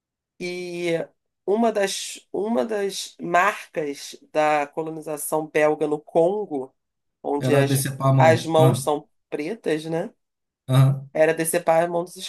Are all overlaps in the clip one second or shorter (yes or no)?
no